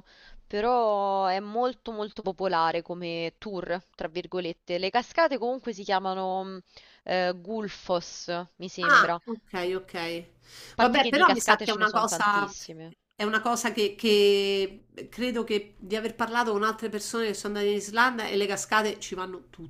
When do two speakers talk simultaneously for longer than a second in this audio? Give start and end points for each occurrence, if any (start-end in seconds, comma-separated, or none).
10.8-12.5